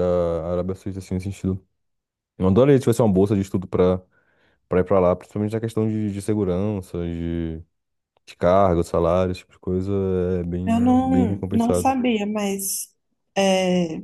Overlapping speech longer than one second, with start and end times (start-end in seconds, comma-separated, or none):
10.7-12.0